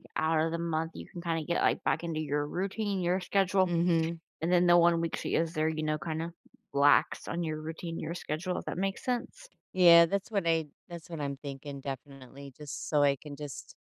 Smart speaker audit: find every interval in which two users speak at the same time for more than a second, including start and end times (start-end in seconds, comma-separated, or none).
none